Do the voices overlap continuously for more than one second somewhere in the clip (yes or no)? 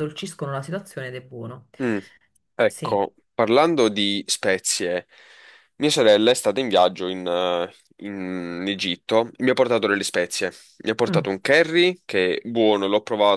no